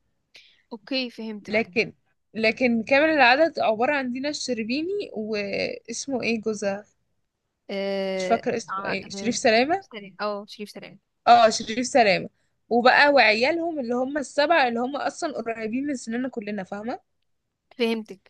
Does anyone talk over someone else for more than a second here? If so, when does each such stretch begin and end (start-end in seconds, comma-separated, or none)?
8.2-9.8